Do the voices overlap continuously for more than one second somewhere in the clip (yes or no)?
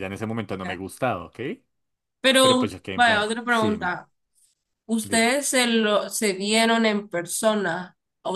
yes